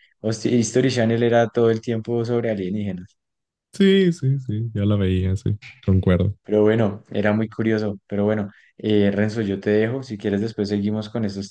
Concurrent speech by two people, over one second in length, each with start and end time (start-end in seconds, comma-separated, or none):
none